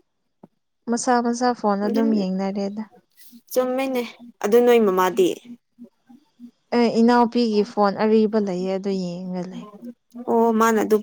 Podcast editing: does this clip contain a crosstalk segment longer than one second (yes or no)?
no